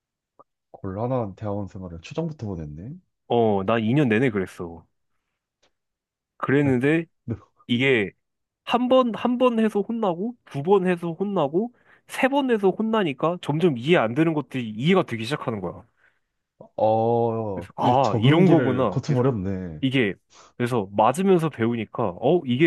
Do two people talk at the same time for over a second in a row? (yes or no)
yes